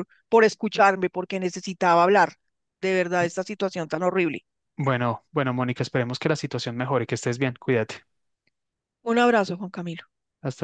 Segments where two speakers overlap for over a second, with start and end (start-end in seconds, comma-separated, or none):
none